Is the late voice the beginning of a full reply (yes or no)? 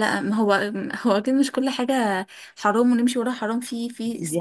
yes